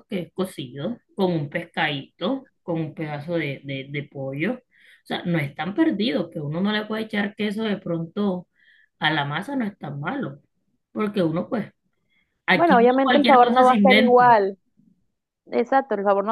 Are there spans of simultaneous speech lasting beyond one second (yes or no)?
yes